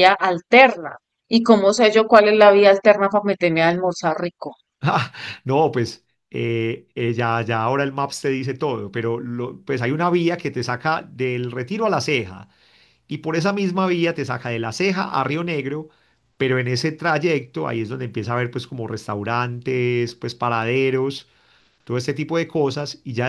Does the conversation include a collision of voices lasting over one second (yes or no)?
no